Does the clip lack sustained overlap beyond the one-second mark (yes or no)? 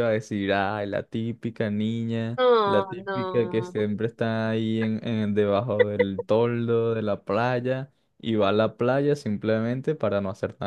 no